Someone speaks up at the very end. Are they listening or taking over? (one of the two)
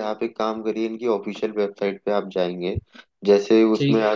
listening